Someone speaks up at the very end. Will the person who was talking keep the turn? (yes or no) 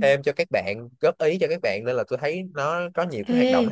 no